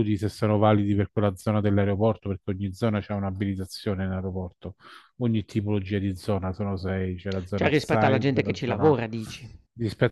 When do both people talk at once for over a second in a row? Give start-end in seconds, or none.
7.5-9.0